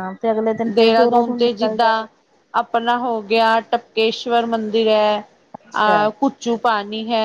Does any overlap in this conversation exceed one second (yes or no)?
yes